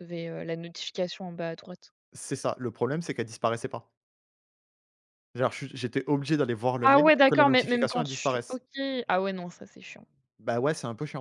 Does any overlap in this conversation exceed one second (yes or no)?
yes